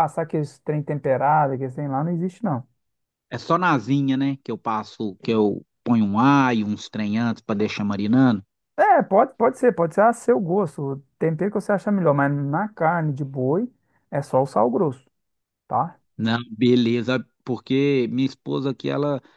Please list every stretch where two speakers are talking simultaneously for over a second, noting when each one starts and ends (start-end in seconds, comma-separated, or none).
none